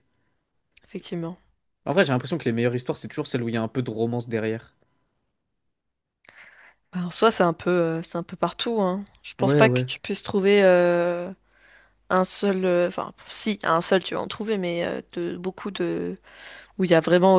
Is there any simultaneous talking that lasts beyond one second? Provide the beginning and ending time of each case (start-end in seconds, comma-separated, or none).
none